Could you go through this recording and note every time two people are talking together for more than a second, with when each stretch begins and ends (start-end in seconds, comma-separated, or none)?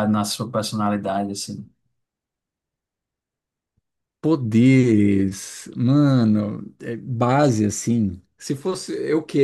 none